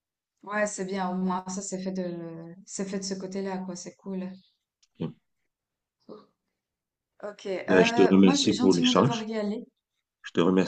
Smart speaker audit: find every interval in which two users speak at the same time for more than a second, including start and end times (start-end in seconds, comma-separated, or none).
7.7-9.3